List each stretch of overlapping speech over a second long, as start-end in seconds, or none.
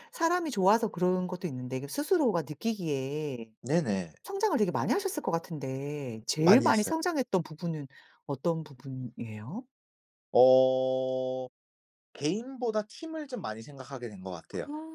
none